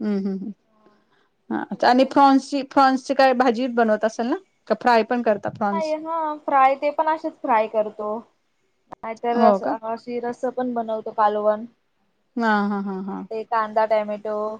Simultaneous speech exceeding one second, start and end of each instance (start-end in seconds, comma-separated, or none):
0.7-2.0